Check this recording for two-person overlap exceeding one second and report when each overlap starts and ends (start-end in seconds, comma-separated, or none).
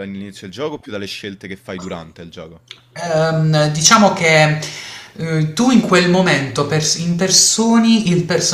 none